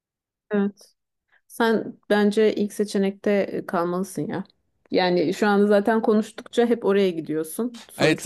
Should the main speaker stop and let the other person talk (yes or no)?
yes